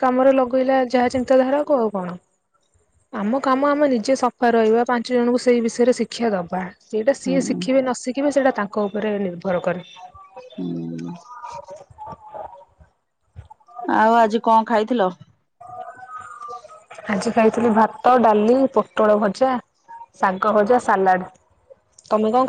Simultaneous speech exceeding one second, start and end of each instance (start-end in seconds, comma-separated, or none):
none